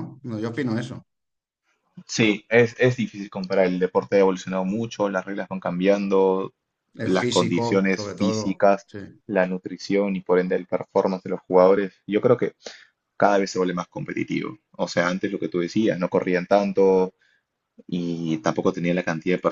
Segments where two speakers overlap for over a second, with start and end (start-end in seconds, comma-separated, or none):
7.0-8.9